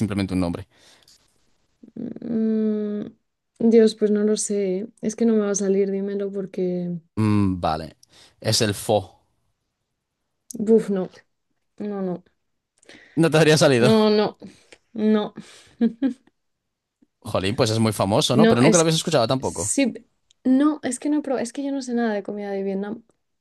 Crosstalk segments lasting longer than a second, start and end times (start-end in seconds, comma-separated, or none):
18.3-19.7